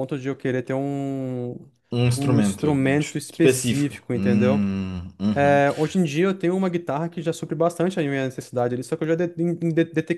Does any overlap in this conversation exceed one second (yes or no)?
yes